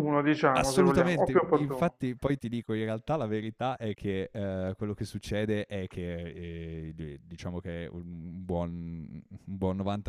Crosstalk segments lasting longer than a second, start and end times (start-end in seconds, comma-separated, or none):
0.5-2.0